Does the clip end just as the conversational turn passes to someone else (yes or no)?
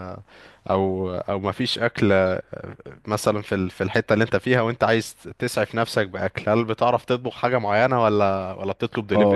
yes